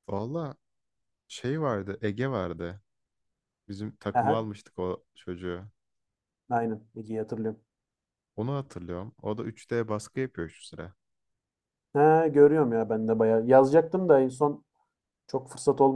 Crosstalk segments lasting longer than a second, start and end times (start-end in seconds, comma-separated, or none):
none